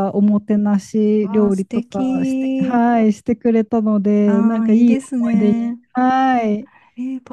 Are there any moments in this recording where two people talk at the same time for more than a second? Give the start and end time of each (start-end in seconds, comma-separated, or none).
1.2-2.8, 4.2-5.8